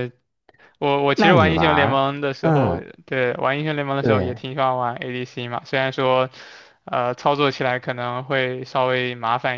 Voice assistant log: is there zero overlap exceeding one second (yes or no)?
no